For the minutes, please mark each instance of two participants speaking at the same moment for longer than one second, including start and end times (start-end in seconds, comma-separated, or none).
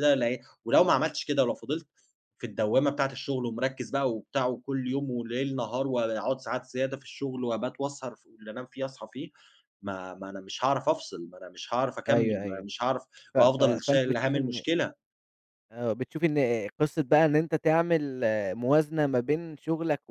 13.3-14.6